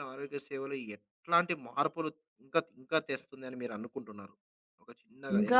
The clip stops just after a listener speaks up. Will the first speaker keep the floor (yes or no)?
no